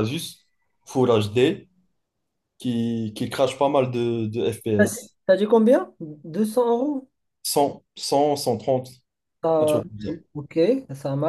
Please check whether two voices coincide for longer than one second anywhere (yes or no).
no